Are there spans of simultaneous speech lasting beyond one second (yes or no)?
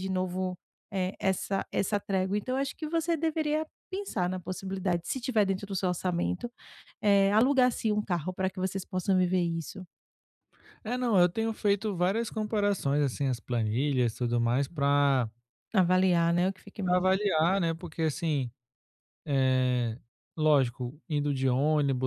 no